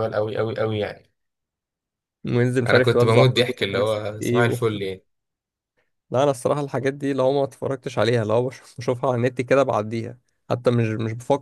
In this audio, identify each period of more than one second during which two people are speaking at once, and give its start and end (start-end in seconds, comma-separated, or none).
2.7-4.6